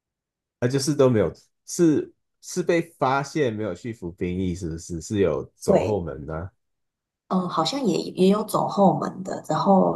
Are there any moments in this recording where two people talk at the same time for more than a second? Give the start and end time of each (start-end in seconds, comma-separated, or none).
none